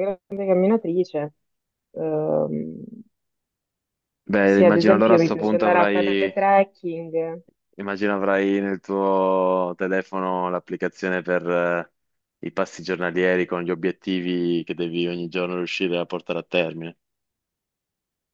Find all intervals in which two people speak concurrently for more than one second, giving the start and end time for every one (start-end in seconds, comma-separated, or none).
4.4-6.4